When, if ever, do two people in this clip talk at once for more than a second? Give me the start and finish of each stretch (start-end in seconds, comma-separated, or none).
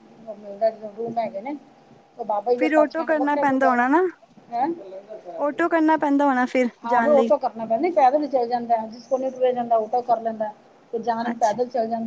2.6-3.8